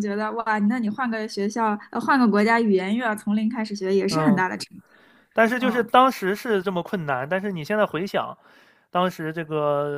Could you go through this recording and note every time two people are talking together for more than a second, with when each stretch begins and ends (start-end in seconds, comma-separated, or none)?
none